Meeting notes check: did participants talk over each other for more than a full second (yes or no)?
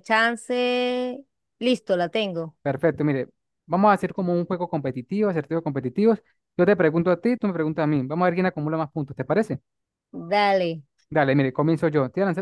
no